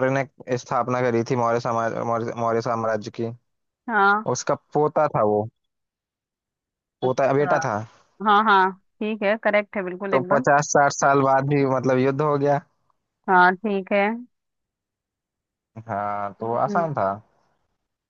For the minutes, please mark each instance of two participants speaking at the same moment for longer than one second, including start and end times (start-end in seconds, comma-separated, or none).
none